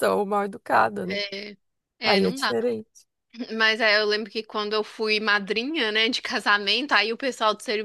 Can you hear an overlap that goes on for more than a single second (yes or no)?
no